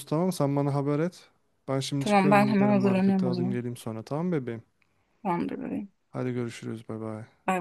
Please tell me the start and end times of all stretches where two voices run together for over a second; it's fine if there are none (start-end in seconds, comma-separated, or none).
2.0-3.6